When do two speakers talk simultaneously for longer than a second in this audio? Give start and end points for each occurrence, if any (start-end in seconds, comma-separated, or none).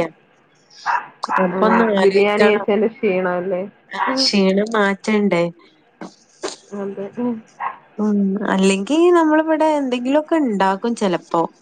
1.4-2.7